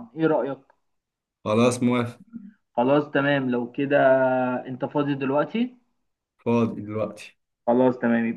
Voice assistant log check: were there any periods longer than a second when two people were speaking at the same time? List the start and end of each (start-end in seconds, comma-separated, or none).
none